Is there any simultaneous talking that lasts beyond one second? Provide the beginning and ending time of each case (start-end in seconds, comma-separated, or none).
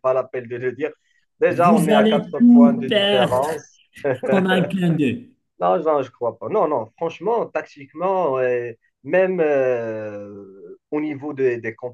1.5-3.5